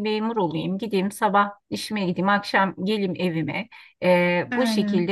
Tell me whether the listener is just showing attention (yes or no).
yes